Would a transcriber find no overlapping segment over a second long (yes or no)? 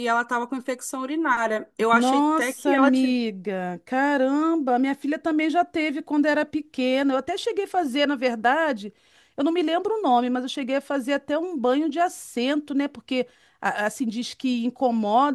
no